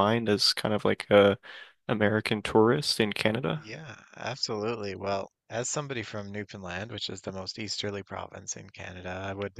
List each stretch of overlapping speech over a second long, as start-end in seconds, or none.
none